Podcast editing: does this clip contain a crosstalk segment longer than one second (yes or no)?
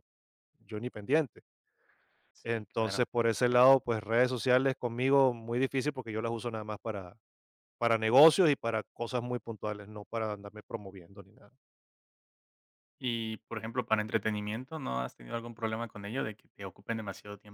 yes